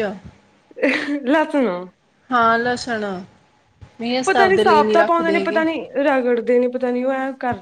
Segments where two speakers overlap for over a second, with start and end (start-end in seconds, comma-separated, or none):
4.2-5.7